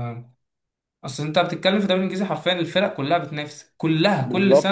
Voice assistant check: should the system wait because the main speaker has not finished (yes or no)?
no